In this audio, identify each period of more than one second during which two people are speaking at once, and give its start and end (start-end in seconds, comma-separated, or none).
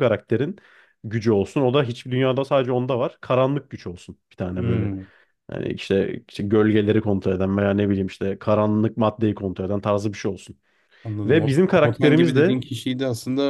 11.2-12.6